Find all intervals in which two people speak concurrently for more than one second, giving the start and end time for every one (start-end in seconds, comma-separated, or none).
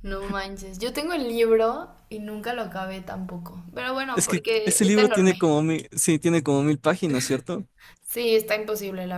4.1-5.5